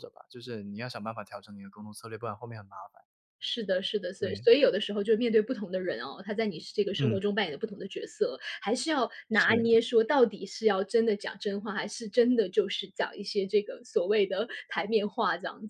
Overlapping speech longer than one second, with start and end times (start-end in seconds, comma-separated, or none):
none